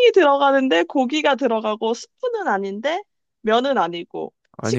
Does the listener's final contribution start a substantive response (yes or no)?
no